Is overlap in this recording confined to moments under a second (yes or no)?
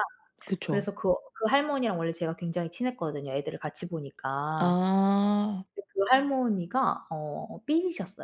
yes